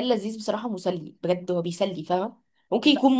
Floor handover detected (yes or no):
no